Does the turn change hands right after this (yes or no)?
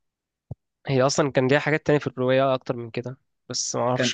no